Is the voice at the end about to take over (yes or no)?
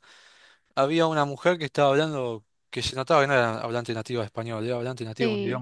no